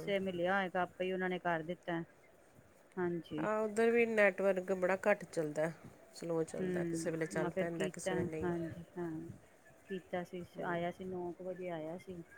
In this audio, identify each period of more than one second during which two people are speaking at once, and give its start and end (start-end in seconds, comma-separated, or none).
6.6-8.7